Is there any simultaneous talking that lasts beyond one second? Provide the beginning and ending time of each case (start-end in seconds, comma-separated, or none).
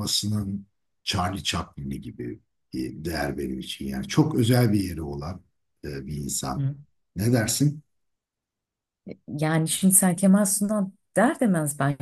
none